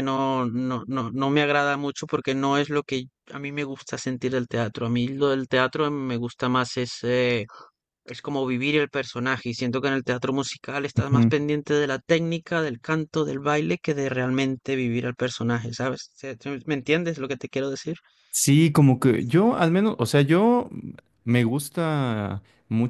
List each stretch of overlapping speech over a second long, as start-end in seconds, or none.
none